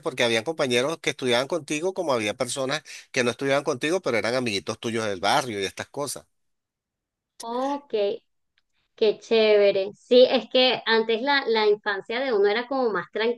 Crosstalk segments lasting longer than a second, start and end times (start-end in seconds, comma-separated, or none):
none